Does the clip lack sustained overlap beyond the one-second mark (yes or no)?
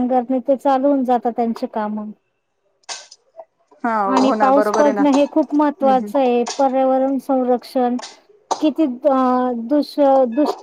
no